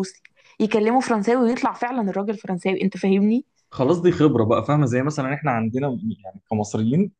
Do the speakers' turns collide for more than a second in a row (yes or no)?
no